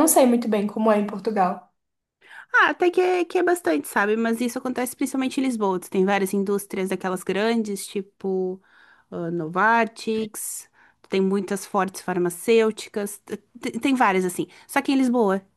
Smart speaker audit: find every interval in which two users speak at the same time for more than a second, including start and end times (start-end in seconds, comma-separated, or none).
none